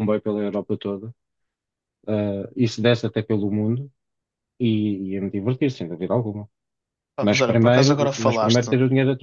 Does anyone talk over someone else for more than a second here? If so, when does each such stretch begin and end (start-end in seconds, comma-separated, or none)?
7.2-8.7